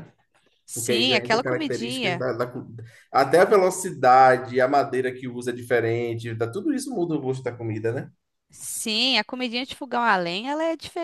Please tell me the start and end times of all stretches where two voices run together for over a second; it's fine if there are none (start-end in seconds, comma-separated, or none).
0.7-2.2